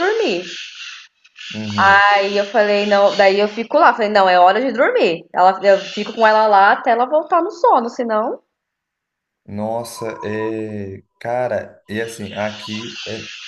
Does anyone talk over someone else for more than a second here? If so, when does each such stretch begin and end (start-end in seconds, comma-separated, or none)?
none